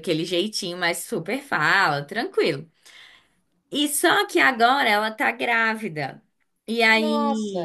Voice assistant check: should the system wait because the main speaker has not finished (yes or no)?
yes